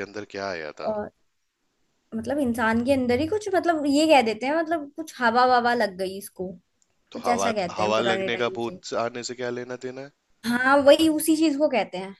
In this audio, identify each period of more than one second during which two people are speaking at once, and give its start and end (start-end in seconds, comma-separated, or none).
7.1-8.8